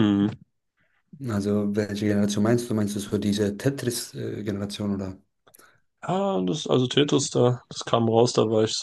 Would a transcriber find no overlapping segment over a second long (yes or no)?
yes